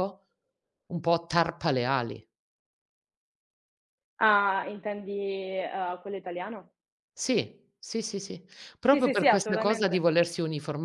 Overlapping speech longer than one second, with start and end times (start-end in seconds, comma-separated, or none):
8.9-10.1